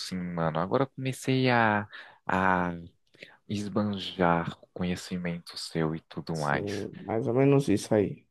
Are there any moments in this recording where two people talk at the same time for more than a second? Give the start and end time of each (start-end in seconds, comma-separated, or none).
none